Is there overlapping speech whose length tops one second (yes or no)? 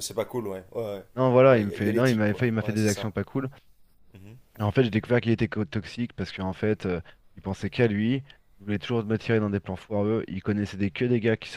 yes